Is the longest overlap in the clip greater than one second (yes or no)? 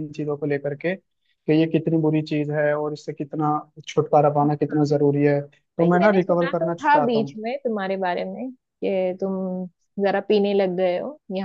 yes